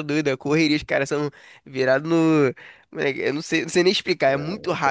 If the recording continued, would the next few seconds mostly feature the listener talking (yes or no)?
yes